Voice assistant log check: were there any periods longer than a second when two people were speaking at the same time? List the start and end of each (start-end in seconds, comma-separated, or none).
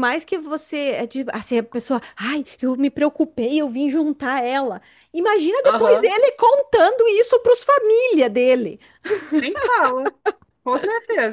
none